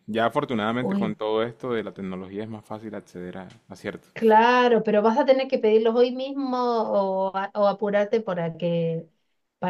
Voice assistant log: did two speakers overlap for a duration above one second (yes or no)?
no